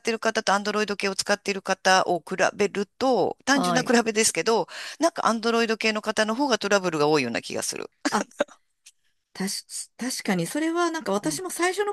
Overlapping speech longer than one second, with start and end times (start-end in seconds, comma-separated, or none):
none